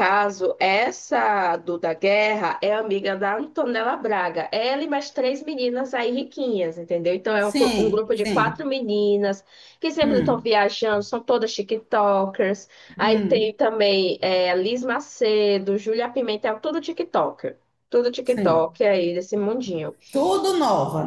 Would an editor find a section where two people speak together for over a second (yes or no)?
yes